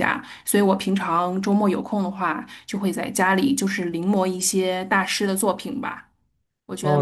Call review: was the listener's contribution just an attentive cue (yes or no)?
no